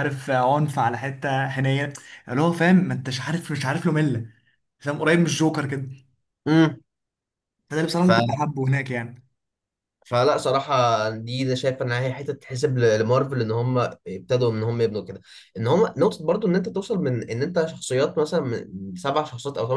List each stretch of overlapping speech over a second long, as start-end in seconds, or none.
none